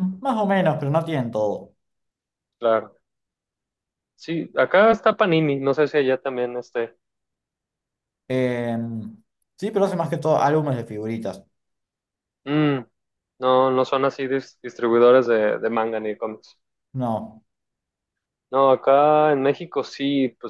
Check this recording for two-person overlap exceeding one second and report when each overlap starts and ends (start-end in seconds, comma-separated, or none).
none